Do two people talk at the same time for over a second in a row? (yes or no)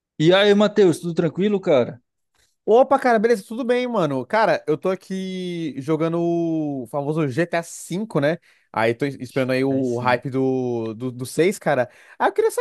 no